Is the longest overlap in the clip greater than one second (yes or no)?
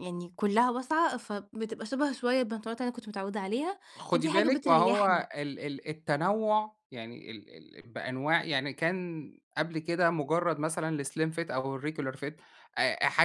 yes